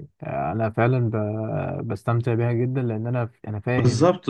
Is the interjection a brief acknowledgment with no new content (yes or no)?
no